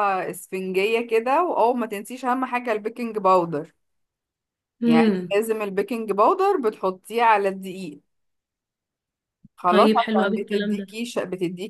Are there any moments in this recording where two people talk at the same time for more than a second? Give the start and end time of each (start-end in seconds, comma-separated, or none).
9.7-11.0